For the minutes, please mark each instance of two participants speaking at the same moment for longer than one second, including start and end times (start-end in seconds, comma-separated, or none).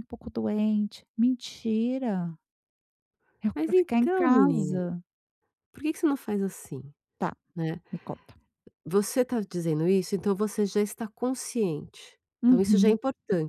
3.5-4.8